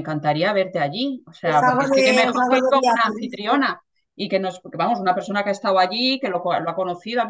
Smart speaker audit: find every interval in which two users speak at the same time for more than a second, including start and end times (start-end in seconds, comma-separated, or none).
1.4-3.7